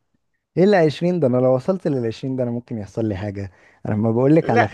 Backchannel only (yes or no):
yes